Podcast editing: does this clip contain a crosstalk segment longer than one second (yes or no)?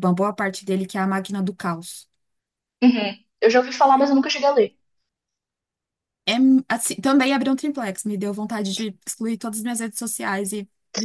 no